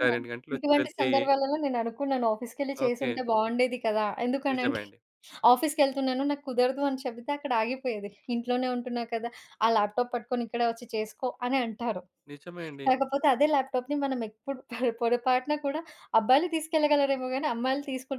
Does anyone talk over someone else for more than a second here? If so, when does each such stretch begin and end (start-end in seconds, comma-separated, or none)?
none